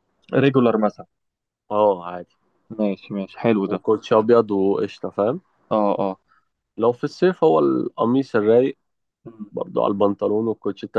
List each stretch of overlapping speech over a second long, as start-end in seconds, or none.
none